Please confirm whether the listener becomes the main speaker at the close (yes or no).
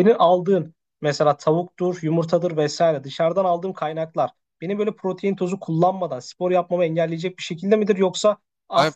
yes